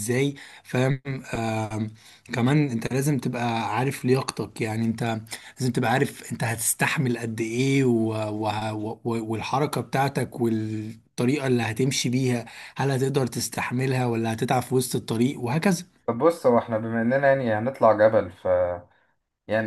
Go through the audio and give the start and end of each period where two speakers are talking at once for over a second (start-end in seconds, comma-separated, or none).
none